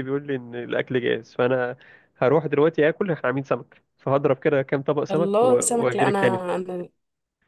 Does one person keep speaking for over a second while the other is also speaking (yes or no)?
yes